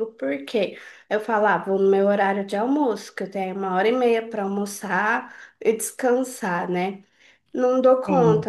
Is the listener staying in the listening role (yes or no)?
yes